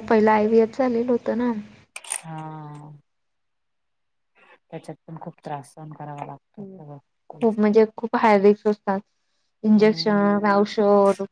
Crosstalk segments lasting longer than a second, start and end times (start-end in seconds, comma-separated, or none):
none